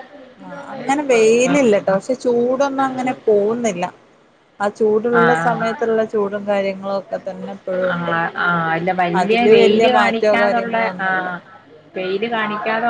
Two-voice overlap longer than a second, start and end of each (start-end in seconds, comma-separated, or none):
9.2-11.3